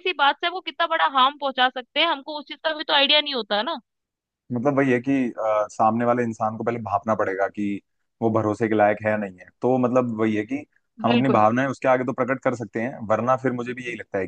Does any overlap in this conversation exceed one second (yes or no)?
no